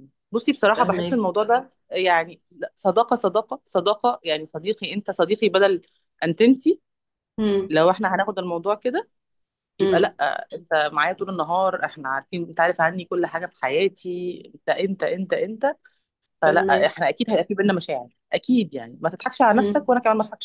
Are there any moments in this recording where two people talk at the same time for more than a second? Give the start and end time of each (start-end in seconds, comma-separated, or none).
none